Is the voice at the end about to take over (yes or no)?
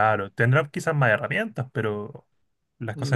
yes